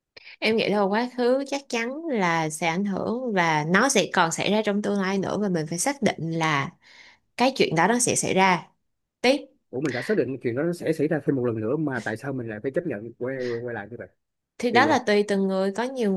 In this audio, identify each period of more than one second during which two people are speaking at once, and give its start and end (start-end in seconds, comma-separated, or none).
none